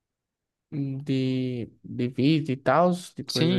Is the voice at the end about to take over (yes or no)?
yes